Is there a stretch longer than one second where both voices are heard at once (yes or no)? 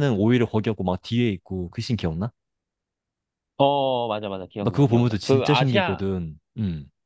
yes